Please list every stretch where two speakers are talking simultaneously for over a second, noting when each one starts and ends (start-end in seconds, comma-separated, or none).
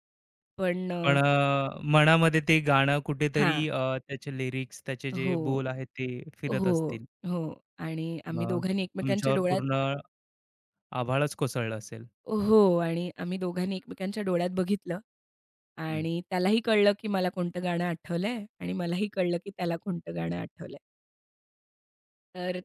8.4-9.8